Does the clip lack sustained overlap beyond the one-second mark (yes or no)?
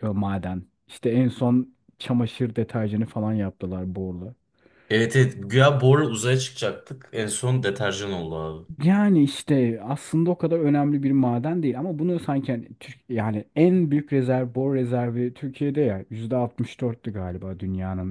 yes